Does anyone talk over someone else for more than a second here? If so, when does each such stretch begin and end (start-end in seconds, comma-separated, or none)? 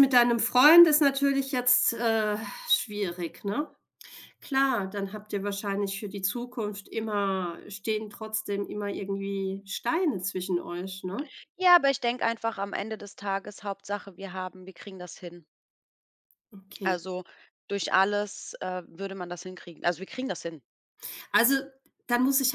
none